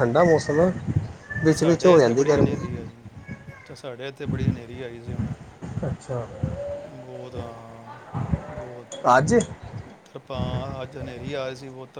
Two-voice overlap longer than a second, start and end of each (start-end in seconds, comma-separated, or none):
1.5-2.8